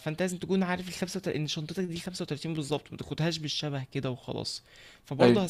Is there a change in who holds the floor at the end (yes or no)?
no